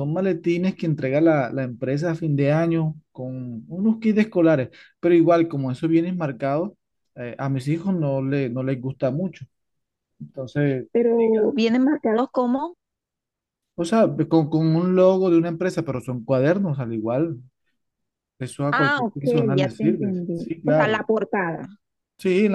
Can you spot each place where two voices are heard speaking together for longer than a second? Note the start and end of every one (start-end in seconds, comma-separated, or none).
18.7-21.0